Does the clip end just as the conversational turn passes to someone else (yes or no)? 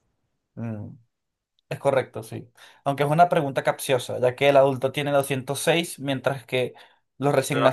yes